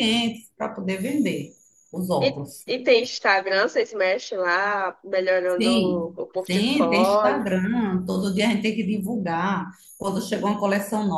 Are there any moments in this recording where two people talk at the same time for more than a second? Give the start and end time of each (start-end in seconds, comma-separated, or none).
5.6-7.5